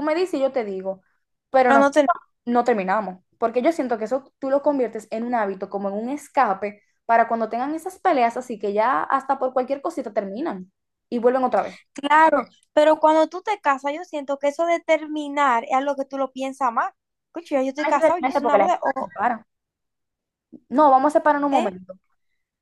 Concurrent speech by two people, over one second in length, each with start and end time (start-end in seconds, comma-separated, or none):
17.8-19.1